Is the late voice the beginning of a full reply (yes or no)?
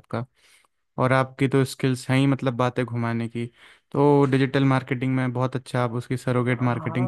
yes